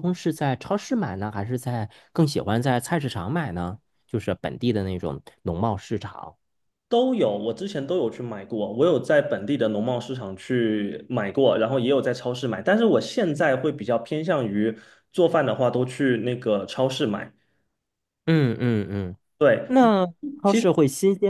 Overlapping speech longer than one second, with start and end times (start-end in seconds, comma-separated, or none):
none